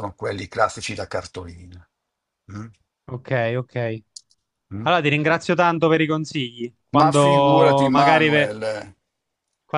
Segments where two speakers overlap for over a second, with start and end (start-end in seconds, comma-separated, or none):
7.0-8.5